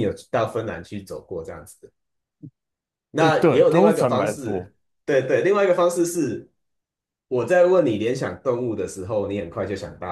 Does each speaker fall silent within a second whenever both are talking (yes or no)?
no